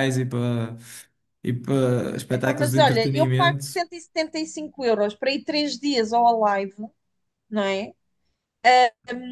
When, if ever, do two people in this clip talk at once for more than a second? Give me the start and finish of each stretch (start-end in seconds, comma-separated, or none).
2.3-3.8